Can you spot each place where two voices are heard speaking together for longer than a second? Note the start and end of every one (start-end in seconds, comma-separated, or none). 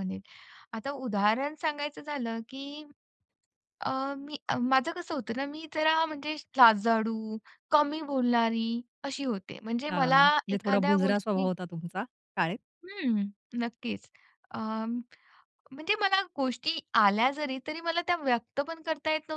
9.9-11.5